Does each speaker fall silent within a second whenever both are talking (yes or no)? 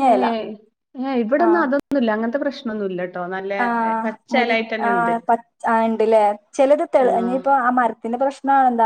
yes